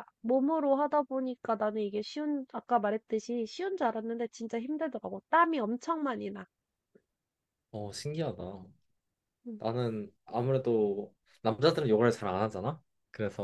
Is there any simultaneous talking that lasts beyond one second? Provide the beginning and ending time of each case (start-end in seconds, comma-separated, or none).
none